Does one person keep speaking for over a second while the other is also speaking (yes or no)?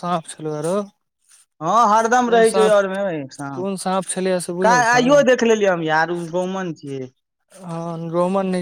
yes